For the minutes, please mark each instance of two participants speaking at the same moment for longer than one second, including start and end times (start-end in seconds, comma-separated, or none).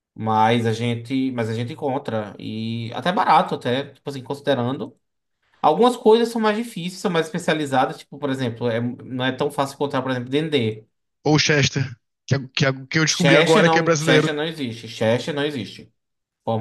13.1-14.3